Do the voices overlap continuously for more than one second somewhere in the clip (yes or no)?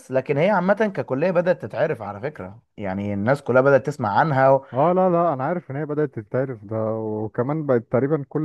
no